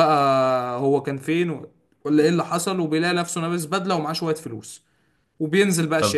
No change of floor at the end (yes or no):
no